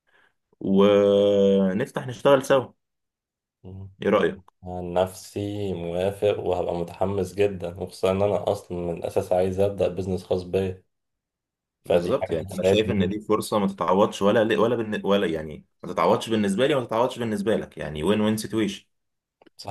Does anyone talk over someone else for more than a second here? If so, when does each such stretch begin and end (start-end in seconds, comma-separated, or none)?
11.8-13.1